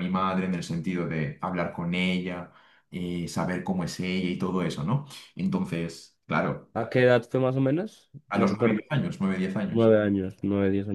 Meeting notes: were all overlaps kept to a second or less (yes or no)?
yes